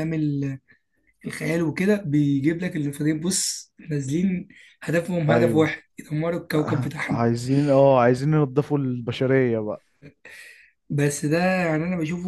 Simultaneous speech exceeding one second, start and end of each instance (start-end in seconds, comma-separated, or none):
none